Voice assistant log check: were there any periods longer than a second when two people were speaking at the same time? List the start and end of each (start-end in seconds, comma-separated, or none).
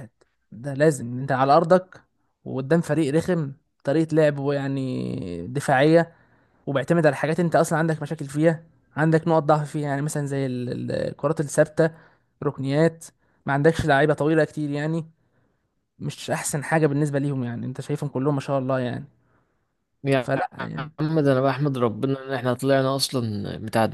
none